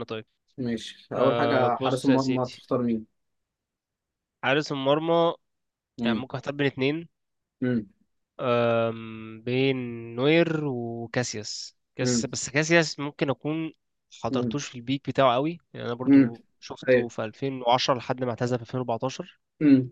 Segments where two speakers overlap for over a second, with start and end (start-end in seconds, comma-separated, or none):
1.1-2.6